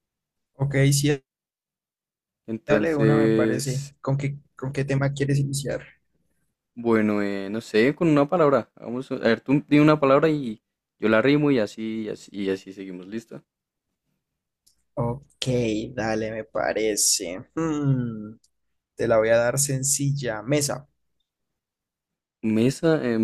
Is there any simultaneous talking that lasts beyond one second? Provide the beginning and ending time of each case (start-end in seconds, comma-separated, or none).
2.7-3.9